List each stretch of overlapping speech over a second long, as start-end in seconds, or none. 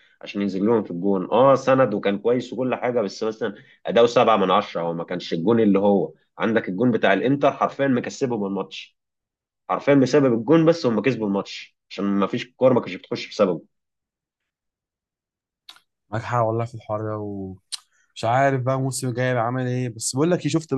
none